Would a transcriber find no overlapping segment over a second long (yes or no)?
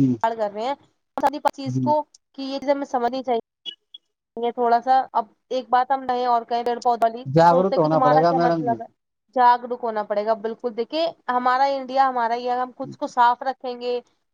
no